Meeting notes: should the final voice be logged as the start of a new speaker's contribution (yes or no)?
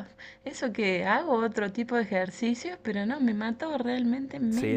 yes